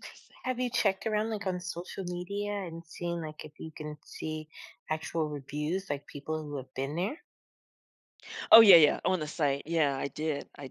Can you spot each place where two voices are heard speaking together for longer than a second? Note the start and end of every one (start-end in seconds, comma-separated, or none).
none